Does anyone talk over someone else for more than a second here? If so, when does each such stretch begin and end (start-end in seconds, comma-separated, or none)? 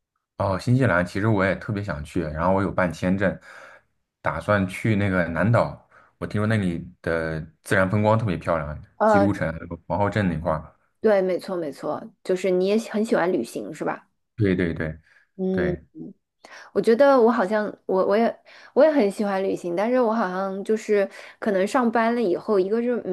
none